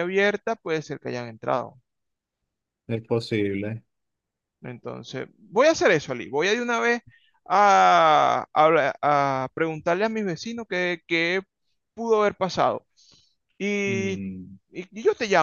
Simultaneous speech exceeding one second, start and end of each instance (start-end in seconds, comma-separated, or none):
none